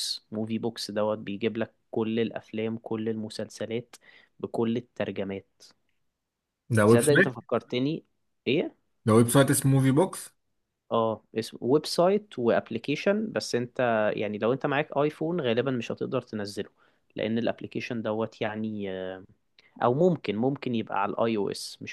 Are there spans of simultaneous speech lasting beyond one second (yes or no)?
no